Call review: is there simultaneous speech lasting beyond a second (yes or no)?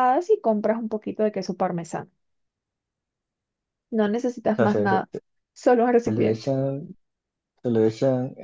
no